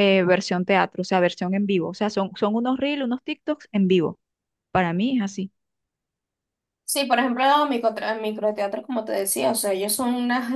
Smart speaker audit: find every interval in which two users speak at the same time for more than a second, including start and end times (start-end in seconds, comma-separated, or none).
none